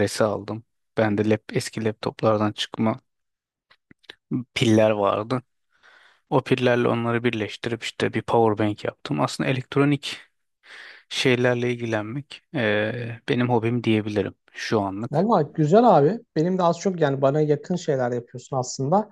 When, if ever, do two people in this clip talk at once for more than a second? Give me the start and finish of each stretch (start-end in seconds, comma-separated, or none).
none